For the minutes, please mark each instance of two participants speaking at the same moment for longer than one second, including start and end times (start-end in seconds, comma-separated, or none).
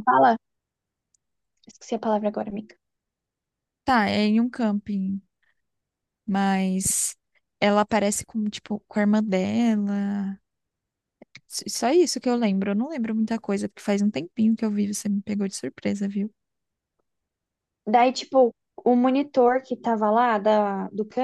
none